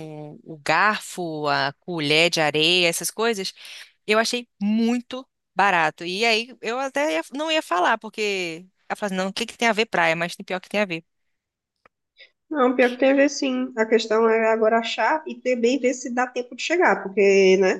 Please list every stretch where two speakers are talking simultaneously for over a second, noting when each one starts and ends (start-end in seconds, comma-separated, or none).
none